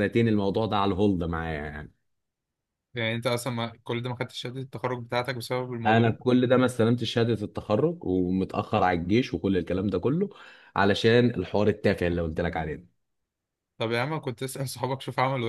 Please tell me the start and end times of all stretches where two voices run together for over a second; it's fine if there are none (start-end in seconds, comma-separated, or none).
none